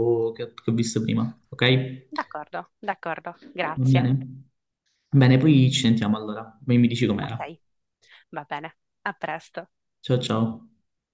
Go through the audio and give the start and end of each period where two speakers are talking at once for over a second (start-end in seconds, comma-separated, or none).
none